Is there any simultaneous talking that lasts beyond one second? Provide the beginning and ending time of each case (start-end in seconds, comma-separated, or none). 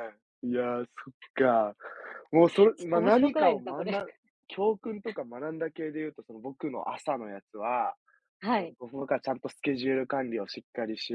2.8-4.0